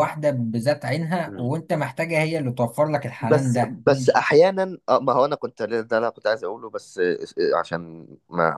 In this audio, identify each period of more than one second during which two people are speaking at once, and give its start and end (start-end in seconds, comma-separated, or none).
none